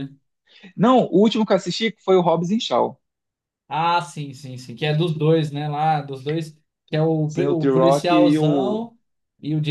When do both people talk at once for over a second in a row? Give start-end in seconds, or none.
7.2-8.9